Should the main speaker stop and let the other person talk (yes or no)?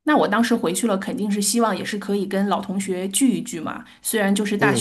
no